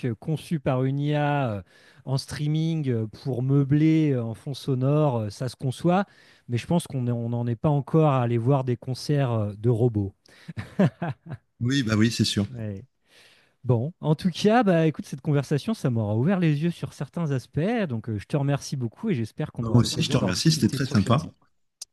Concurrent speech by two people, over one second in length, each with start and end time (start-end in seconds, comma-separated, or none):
19.6-21.2